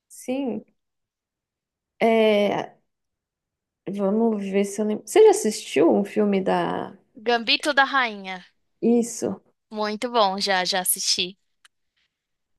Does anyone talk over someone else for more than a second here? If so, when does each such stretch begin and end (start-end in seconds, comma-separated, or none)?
none